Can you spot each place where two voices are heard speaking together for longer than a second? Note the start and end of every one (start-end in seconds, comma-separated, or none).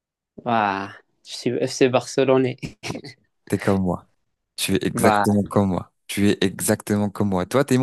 none